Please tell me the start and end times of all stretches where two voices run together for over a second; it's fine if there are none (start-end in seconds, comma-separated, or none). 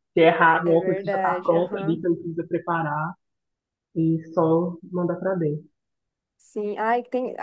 0.6-2.1